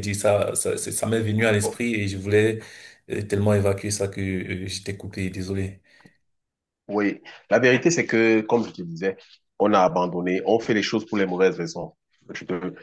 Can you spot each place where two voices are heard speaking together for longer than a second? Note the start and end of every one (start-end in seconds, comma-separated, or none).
none